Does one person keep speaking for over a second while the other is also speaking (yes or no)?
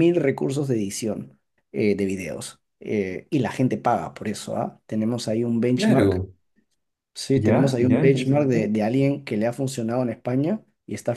yes